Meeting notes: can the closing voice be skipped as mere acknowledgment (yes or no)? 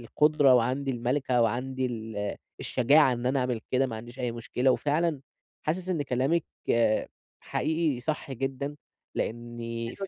yes